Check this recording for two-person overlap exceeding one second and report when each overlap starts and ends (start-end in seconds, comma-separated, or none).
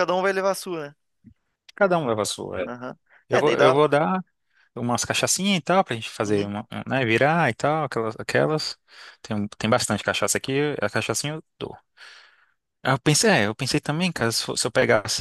none